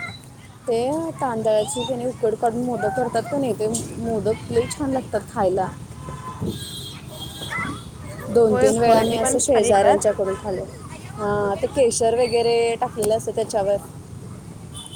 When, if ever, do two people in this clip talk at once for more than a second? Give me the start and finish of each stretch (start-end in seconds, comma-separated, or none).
8.5-10.1